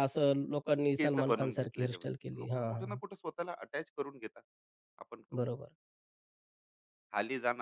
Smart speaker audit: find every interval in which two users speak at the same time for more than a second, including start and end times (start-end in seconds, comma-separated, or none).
1.0-3.0